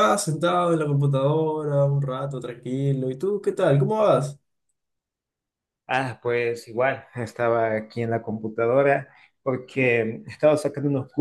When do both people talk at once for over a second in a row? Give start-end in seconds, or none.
none